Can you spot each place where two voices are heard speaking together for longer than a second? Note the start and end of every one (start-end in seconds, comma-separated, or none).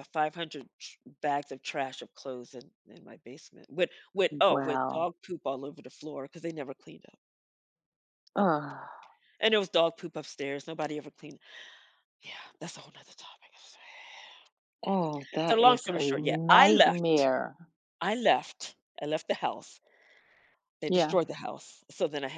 15.5-17.0